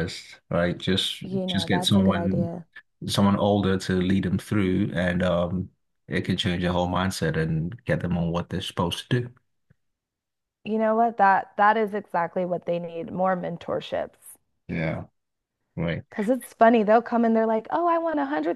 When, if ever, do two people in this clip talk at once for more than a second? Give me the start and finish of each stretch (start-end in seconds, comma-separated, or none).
1.2-2.5